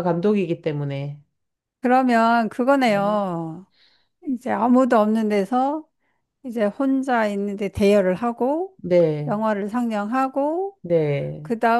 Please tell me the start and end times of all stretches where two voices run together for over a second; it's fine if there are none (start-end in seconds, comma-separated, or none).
none